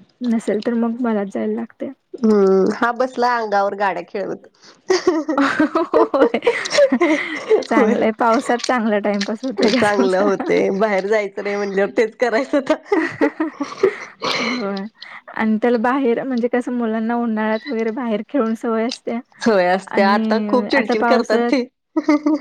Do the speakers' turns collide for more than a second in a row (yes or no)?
yes